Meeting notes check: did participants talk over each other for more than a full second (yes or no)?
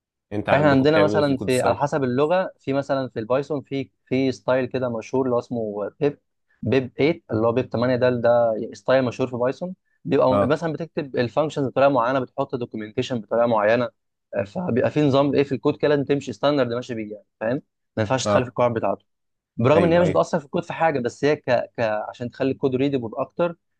yes